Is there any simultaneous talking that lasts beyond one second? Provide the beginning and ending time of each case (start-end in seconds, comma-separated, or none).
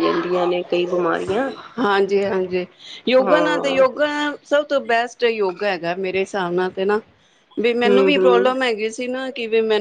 none